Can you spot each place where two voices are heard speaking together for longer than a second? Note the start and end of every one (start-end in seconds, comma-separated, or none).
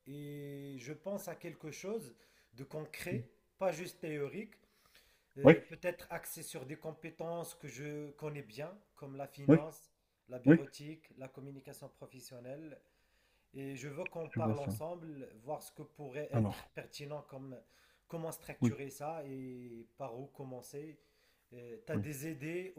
none